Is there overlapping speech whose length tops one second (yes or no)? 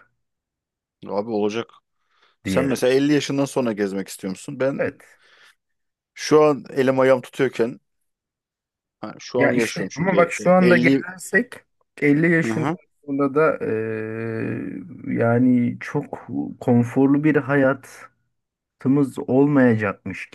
yes